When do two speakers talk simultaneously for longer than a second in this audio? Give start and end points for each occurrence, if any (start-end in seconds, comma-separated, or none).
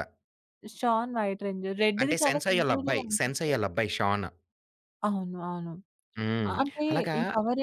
2.0-3.5